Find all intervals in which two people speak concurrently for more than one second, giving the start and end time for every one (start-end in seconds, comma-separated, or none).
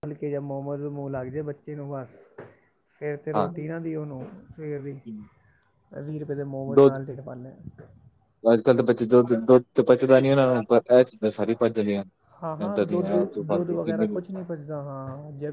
12.7-14.2